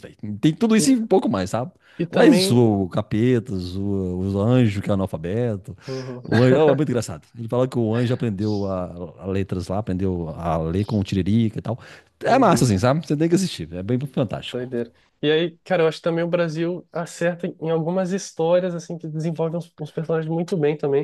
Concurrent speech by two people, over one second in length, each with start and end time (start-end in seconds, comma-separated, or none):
none